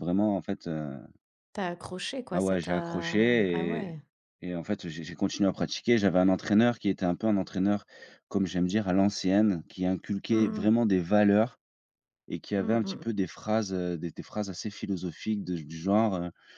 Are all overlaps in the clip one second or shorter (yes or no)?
no